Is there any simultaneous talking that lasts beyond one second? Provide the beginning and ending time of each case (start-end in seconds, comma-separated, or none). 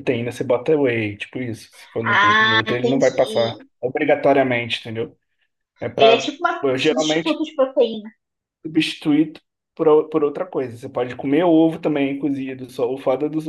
2.0-3.7, 6.0-7.4